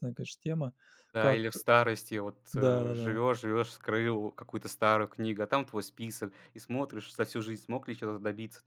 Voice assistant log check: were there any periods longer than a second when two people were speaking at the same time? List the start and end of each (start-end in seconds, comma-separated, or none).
none